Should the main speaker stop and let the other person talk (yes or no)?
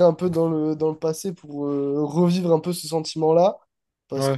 no